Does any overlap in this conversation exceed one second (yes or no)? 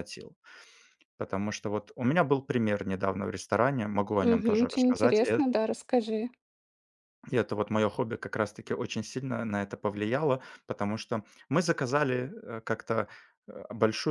yes